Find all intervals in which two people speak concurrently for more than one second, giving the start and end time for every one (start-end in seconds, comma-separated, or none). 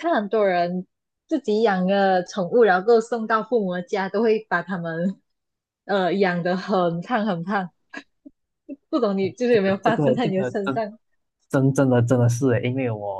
9.5-10.8